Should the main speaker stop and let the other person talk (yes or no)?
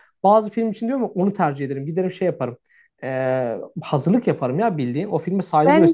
yes